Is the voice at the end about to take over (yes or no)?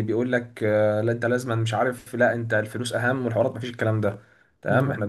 no